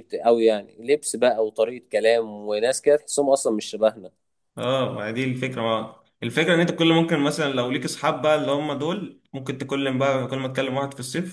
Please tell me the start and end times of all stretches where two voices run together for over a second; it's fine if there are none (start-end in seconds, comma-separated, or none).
none